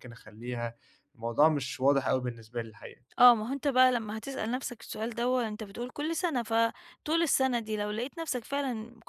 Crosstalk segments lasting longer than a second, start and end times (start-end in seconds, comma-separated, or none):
none